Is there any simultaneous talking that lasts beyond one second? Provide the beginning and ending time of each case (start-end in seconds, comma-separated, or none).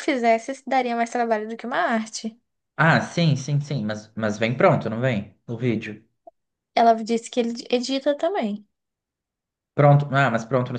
none